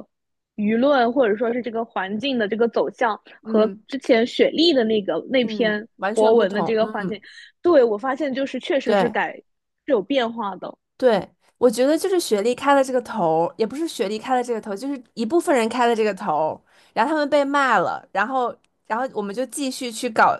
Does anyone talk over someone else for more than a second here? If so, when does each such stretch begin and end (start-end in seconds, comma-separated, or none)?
5.4-7.2